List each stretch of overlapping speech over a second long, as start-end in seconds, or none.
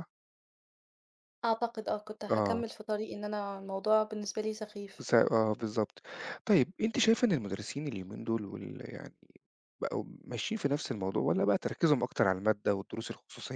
none